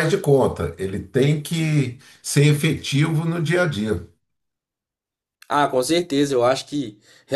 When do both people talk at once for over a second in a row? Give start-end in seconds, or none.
none